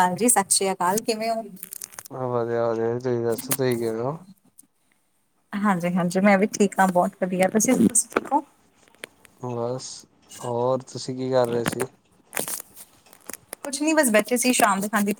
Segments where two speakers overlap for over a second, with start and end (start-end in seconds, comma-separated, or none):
none